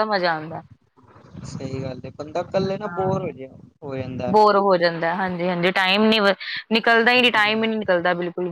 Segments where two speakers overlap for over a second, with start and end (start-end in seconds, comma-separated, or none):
none